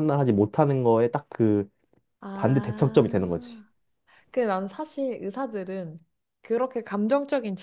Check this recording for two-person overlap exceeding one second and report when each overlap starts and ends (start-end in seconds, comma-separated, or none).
2.3-3.6